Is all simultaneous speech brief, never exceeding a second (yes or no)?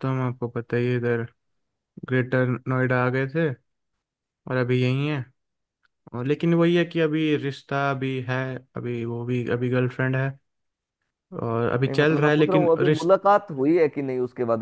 no